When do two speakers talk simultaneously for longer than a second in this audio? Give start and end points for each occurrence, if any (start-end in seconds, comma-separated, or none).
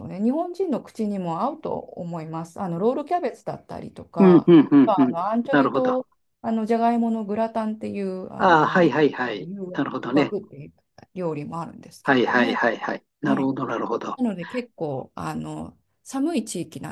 4.2-6.0